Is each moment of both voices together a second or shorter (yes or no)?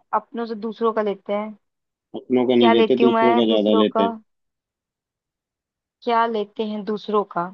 no